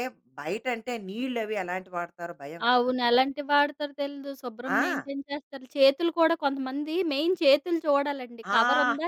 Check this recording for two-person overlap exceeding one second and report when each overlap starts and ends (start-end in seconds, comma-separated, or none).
none